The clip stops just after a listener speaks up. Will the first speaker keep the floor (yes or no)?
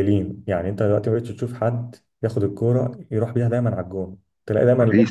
yes